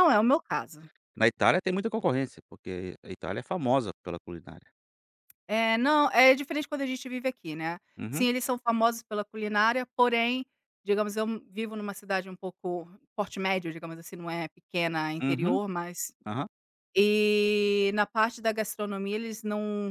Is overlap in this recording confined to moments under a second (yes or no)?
yes